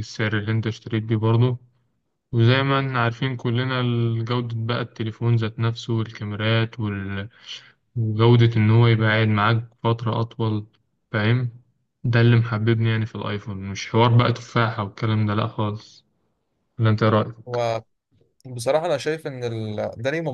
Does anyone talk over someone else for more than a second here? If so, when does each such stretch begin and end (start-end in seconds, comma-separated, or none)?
none